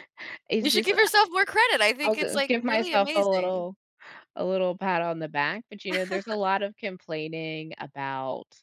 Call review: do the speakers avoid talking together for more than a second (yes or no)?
no